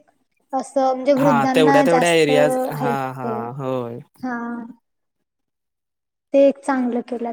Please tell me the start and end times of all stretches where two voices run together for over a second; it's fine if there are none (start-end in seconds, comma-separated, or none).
1.2-3.3